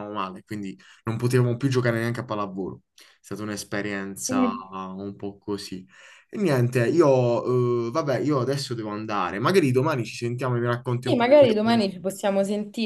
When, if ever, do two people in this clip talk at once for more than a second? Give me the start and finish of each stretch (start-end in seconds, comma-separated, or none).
11.0-12.2